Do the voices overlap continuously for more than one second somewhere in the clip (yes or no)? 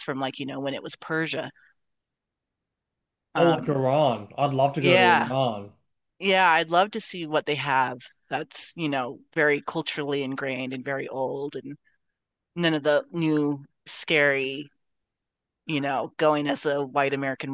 no